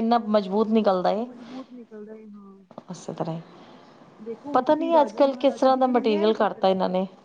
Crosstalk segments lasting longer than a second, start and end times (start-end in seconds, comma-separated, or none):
4.5-6.7